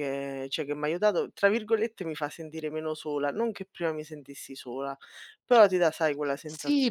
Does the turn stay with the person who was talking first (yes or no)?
no